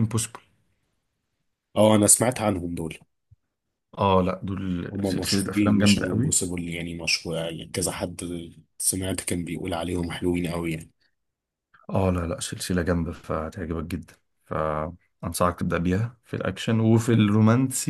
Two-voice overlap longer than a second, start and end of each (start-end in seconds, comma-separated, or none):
4.9-6.4